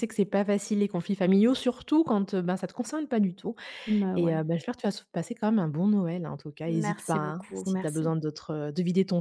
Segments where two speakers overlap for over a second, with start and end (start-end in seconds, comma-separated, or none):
6.7-8.1